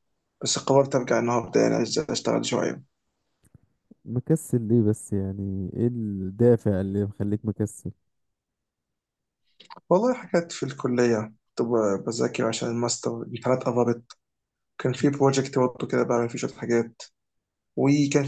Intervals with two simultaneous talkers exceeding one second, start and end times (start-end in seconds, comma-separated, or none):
none